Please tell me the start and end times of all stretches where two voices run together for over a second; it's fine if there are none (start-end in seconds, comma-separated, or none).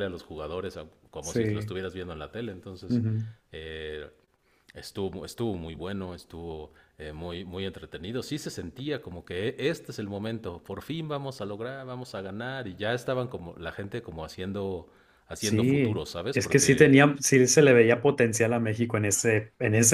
15.4-17.0